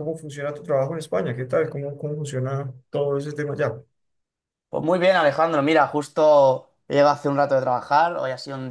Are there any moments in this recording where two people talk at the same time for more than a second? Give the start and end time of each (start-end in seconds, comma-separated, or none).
none